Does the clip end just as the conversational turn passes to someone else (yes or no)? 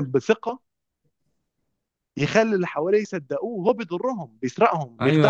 yes